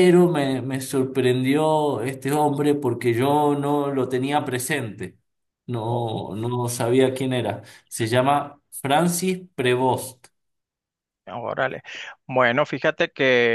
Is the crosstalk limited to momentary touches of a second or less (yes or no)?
yes